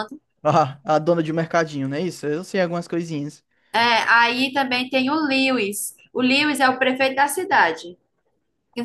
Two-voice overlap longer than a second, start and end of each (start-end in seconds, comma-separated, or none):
none